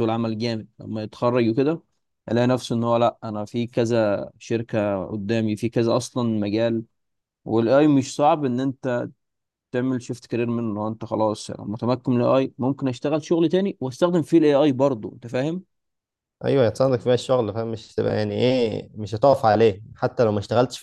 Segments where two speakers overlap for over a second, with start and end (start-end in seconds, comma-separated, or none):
none